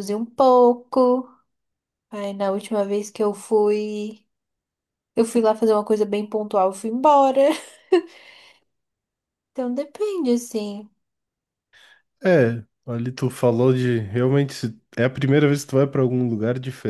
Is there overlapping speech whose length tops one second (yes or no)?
no